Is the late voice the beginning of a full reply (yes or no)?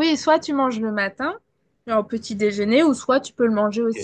yes